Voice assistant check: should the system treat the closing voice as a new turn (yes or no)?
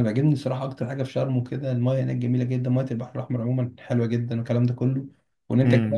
yes